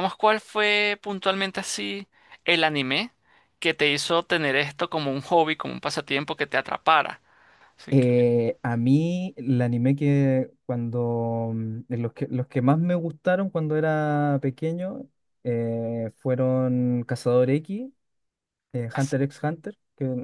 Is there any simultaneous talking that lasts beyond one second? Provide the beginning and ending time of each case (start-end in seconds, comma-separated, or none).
none